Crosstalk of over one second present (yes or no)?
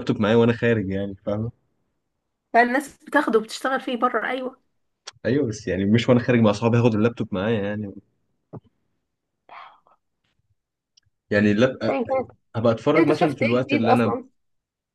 yes